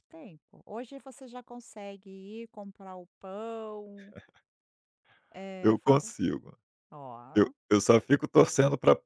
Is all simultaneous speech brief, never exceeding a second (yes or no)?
yes